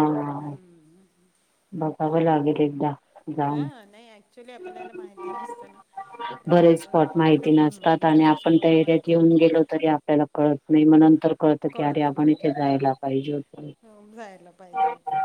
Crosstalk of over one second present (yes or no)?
yes